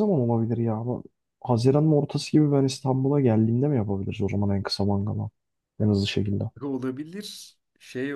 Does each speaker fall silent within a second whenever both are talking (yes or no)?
yes